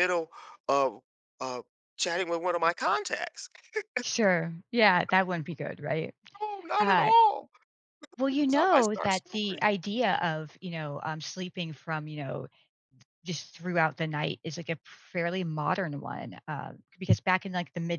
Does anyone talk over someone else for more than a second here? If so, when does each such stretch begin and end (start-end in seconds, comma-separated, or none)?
8.3-9.7